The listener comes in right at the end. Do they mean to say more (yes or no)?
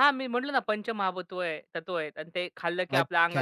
yes